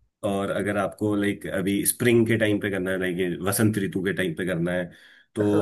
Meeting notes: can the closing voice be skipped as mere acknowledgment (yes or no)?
yes